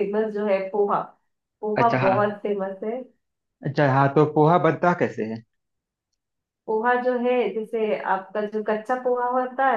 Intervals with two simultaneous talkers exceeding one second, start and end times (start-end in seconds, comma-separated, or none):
none